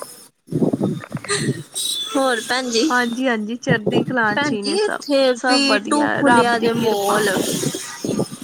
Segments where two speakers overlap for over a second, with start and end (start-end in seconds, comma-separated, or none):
4.3-7.2